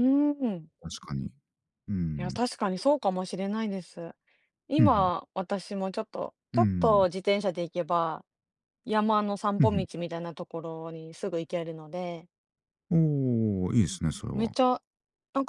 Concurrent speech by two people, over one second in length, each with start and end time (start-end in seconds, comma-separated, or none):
none